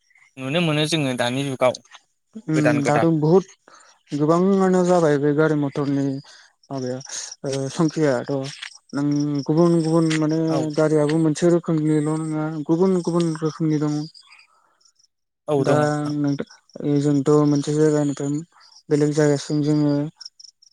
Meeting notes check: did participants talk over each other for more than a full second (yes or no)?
no